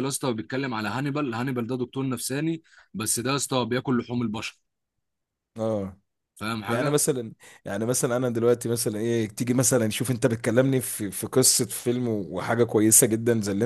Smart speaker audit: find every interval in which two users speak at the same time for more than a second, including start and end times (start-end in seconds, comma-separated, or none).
none